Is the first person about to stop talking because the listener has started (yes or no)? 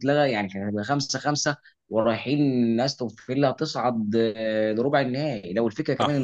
no